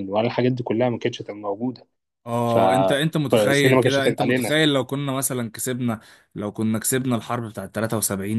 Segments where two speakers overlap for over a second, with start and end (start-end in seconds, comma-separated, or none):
3.3-4.5